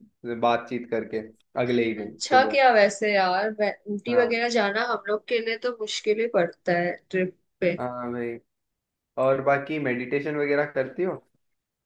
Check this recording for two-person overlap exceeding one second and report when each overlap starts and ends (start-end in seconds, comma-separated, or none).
none